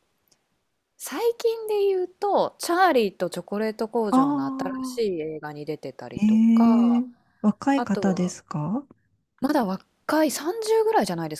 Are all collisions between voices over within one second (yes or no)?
yes